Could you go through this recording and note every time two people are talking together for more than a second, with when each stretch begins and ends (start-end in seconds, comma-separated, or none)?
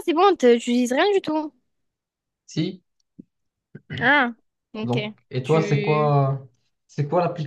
4.8-6.1